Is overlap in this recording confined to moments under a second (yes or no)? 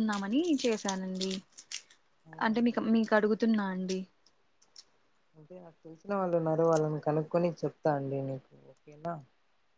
yes